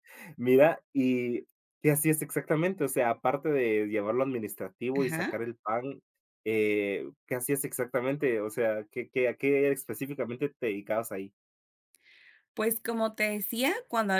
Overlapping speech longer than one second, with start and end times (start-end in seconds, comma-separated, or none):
none